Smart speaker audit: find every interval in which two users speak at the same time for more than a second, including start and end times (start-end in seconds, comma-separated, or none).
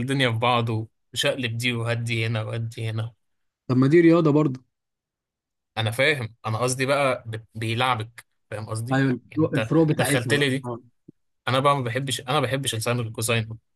8.9-10.7